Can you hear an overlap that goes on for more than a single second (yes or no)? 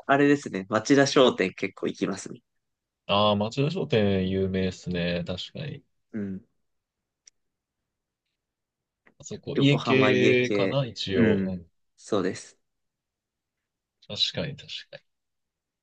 yes